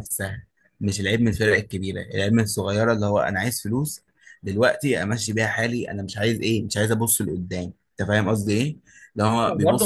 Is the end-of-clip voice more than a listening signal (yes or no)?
yes